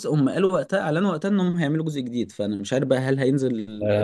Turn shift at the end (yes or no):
yes